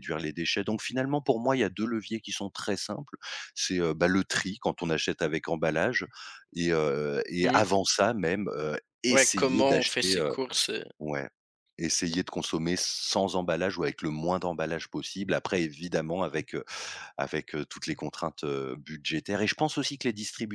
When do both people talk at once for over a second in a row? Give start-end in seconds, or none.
9.1-10.3